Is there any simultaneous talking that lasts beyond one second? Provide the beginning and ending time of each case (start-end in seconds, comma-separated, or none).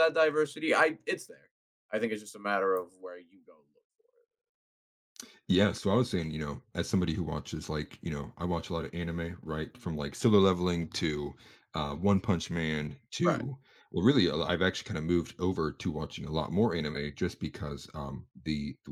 none